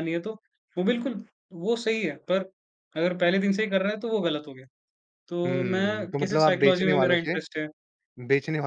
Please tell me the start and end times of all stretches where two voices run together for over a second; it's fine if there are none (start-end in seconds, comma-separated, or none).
5.5-7.3